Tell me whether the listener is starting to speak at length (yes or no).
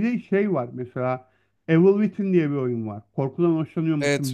yes